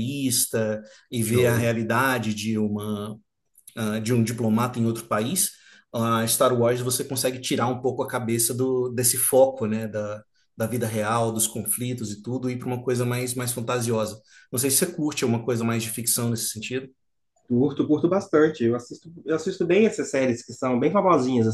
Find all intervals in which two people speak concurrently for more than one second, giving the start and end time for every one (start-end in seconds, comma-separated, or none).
none